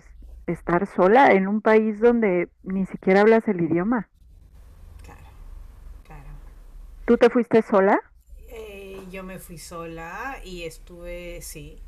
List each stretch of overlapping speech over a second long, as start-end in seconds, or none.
none